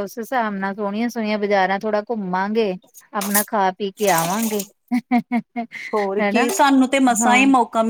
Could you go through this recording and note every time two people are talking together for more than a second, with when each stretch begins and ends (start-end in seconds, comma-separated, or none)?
none